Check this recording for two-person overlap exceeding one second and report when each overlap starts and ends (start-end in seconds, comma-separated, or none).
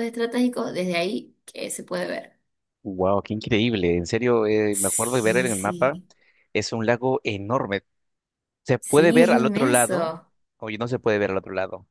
4.7-5.9, 8.8-10.1